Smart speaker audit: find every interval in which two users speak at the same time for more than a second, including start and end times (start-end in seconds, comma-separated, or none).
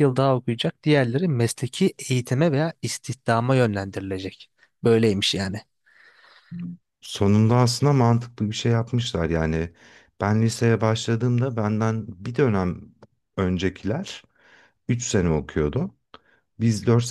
none